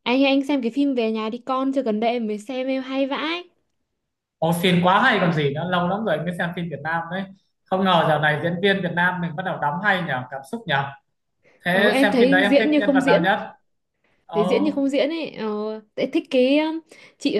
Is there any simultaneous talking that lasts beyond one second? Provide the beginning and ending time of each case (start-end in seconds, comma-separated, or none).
11.7-13.3